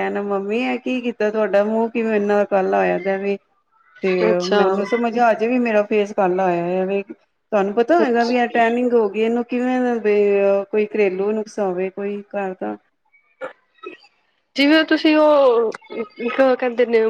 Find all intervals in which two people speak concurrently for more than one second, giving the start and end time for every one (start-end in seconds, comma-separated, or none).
none